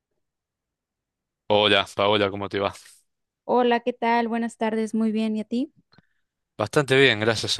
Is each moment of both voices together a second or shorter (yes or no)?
yes